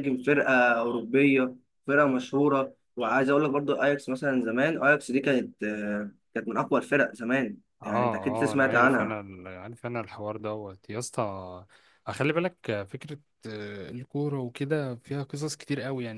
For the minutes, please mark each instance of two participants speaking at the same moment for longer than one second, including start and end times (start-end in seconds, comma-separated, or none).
7.8-9.2